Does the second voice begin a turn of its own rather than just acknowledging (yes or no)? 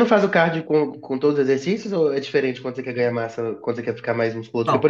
no